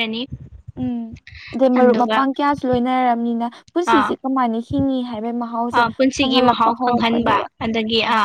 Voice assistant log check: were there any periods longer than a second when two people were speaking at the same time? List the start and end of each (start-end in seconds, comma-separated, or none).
none